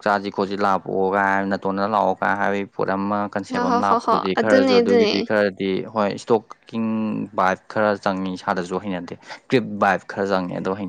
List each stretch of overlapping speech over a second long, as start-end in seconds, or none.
3.5-5.3